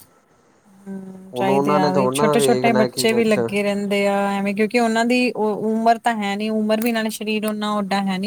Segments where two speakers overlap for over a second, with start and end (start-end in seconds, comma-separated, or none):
1.3-3.4